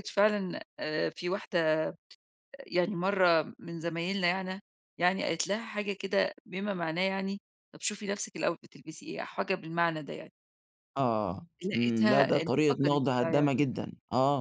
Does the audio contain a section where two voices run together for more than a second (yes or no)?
yes